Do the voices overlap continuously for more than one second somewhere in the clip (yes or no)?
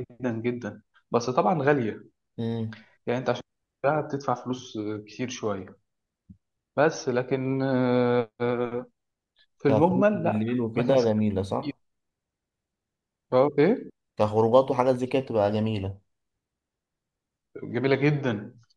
yes